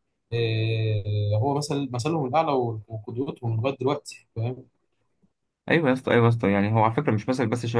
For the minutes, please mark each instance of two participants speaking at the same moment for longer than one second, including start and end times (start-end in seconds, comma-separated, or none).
none